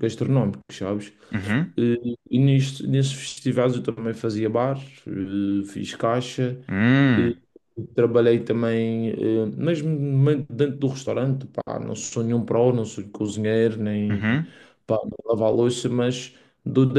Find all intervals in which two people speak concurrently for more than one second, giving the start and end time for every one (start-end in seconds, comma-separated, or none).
none